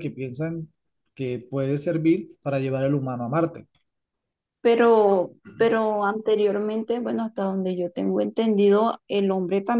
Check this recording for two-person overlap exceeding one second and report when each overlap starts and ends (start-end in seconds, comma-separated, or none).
none